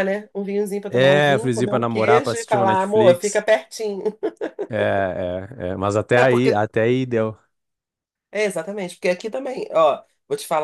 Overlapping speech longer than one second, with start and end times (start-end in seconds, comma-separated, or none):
0.9-3.4